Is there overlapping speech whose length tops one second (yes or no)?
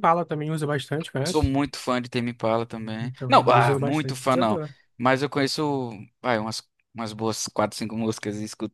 yes